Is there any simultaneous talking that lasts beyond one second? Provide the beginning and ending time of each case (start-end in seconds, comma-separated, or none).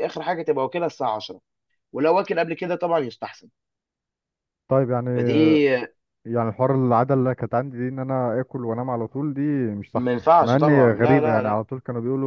9.9-11.6